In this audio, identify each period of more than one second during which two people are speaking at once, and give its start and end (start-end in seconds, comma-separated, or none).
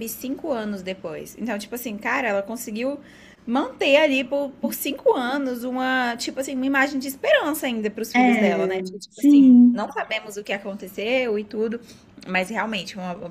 8.1-9.9